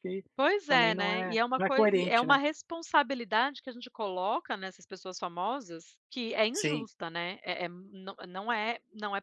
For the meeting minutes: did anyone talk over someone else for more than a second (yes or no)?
yes